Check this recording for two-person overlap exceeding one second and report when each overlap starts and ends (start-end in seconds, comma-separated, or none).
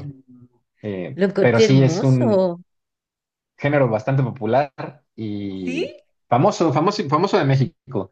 1.1-2.4